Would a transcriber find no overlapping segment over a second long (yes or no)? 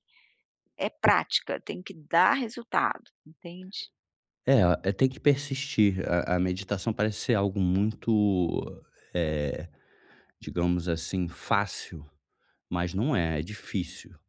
yes